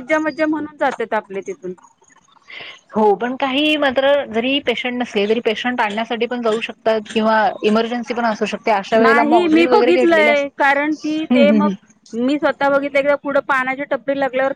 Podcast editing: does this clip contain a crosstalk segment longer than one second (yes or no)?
yes